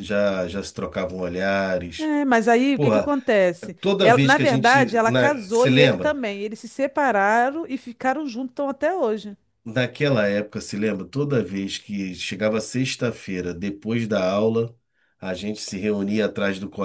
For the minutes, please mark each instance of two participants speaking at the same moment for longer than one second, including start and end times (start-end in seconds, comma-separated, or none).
3.8-6.2